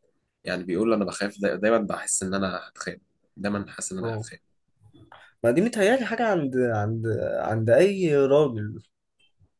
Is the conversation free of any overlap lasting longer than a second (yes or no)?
yes